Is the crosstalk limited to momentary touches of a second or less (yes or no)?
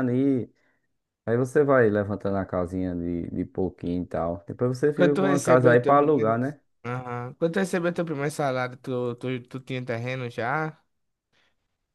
no